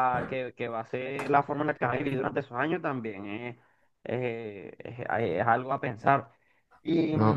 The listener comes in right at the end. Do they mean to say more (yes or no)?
no